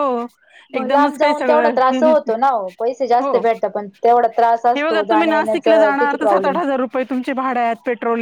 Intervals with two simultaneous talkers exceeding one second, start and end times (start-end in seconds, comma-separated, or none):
0.8-2.3, 4.7-6.6